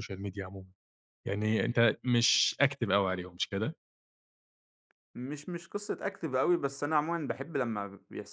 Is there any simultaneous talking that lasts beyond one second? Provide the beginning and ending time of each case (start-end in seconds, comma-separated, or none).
none